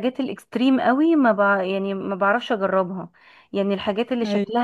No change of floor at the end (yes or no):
yes